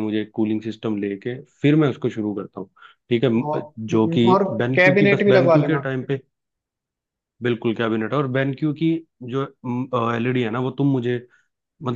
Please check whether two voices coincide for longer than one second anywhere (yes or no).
yes